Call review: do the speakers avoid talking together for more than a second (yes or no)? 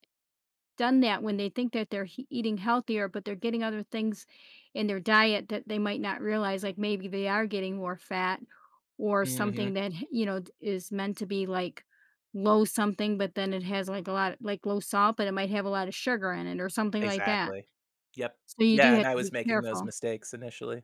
no